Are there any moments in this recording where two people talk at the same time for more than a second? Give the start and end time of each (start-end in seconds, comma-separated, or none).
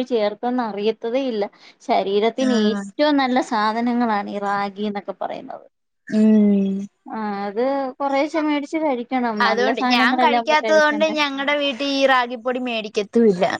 9.5-11.2